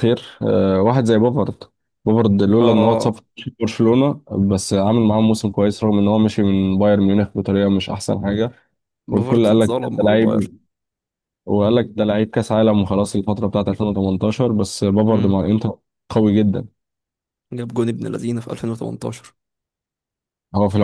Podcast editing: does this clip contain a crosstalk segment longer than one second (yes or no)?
yes